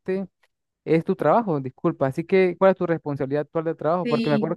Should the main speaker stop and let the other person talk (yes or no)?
no